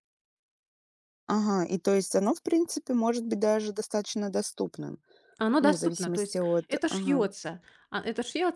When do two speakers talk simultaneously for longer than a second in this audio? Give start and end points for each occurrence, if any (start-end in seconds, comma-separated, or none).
5.6-7.2